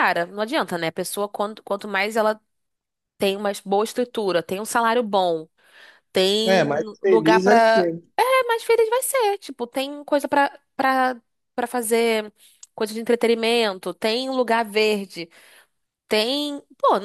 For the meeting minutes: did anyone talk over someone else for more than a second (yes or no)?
yes